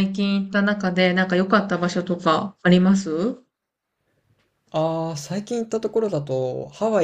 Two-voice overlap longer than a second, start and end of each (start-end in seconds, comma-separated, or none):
none